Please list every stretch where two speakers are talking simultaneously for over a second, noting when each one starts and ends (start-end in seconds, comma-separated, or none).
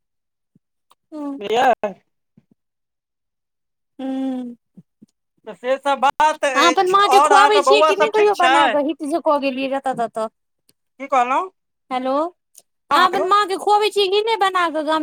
6.5-8.6